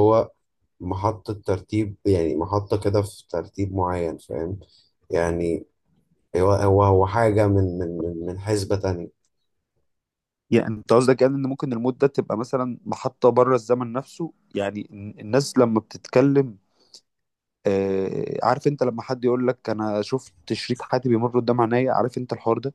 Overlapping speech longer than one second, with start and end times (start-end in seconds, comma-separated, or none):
none